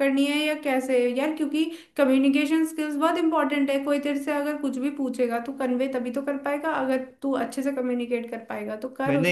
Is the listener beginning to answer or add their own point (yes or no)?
yes